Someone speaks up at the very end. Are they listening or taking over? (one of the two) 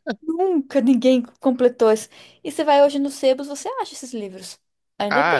taking over